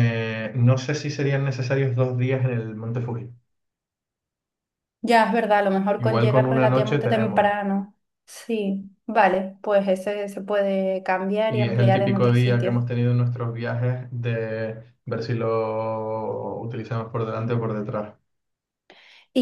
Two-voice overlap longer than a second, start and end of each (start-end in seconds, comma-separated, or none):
6.0-7.5, 11.5-12.9